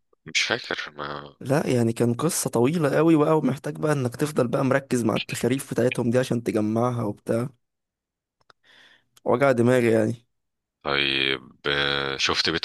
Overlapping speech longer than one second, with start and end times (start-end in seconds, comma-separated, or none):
none